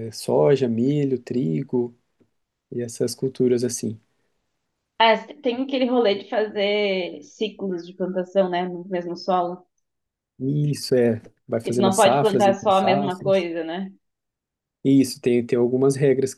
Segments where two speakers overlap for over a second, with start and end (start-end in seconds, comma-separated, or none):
11.6-13.5